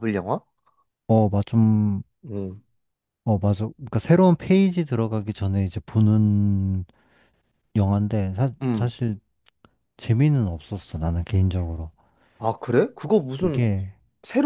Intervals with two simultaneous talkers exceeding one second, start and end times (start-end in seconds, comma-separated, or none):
none